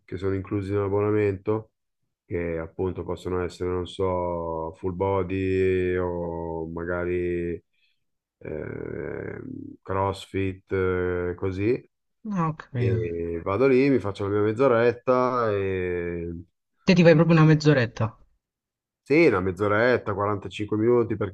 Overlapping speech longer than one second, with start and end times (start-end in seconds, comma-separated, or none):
none